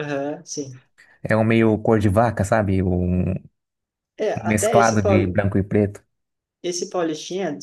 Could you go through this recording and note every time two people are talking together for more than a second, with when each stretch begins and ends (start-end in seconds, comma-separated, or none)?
none